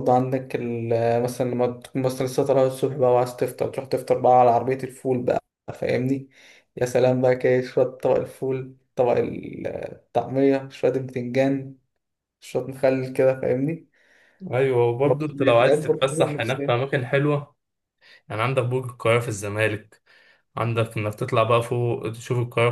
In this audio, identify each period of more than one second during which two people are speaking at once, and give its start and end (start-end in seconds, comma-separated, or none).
15.0-16.7